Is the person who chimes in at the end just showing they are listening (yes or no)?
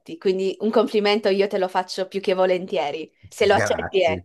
no